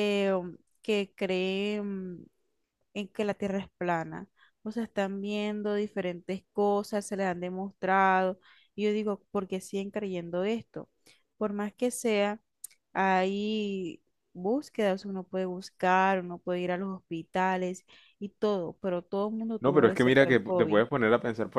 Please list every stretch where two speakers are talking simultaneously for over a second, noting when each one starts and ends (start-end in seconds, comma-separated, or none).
19.6-20.8